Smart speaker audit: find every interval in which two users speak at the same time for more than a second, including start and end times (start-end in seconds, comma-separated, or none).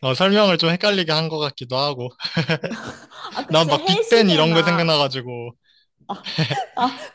3.5-5.0